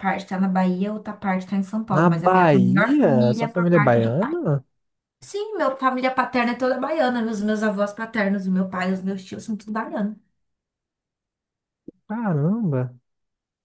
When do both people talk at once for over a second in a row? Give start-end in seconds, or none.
1.9-4.3